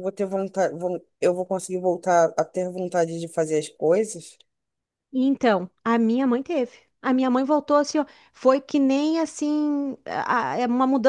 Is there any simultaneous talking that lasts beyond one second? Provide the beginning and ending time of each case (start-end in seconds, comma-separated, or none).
none